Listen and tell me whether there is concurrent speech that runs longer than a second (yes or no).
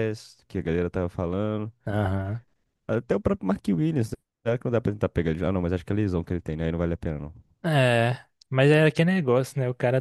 no